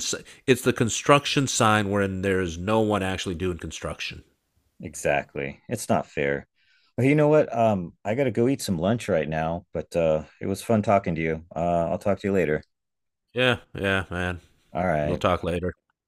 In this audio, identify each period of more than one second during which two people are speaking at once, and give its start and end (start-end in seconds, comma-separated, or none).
none